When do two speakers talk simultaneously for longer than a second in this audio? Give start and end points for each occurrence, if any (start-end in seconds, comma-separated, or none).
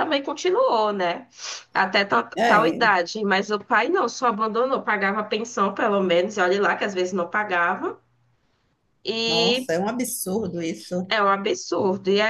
none